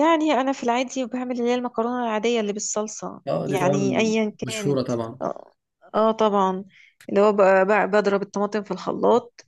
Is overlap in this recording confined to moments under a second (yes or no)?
no